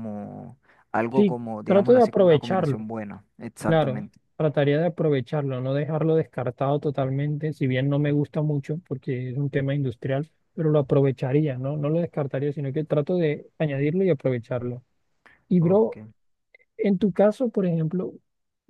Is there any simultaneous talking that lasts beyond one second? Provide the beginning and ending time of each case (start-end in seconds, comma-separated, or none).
1.1-2.8